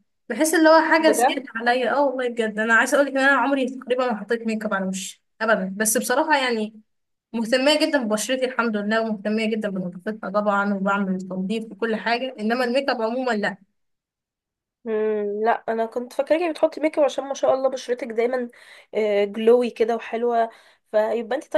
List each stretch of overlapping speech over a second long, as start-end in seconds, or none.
none